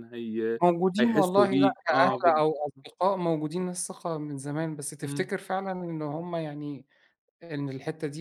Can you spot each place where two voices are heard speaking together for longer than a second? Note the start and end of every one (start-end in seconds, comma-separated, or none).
1.0-2.4